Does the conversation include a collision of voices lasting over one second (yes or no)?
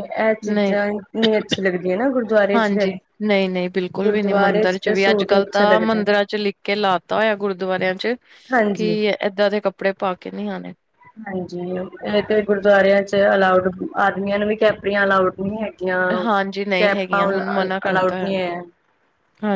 yes